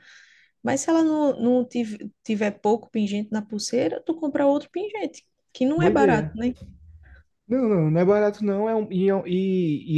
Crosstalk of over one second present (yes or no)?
no